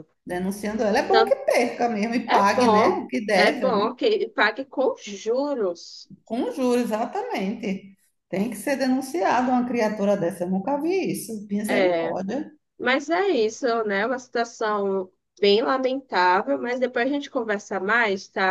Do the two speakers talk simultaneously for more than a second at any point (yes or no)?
yes